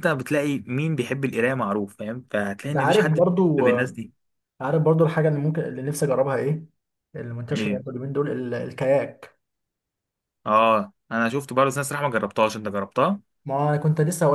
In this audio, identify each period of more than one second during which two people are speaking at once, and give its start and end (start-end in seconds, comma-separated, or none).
2.7-4.0